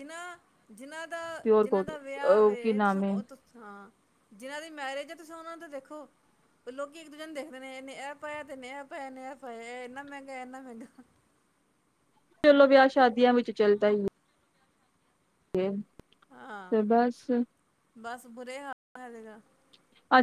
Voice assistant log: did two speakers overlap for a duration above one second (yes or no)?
yes